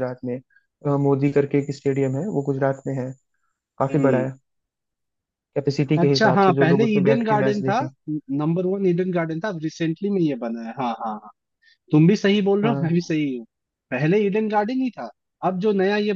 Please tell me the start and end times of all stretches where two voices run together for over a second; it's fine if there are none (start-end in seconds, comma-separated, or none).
6.0-7.8